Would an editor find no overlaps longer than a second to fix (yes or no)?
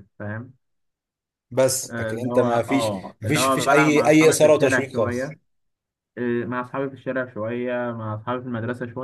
no